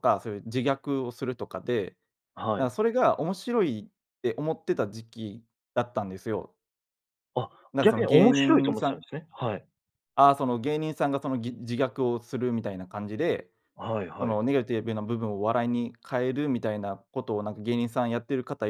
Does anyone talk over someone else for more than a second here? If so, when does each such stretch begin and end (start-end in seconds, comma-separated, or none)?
7.7-9.0